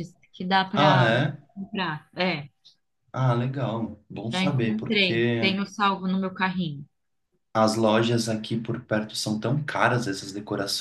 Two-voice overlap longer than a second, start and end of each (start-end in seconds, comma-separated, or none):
4.3-5.6